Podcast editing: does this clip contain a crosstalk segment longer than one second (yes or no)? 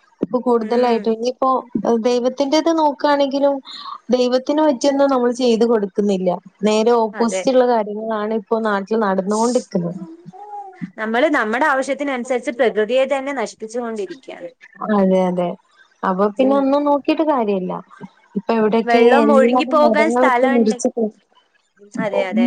yes